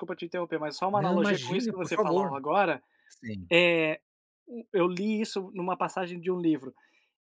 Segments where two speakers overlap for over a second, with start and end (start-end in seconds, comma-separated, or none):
0.9-2.4